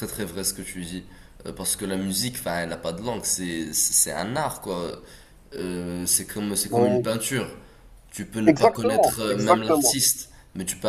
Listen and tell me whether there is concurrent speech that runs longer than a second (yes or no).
yes